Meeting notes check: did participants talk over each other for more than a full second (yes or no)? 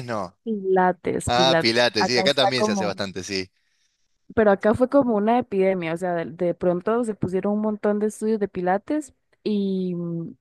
yes